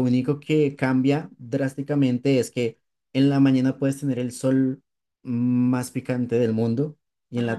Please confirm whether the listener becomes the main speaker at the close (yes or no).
no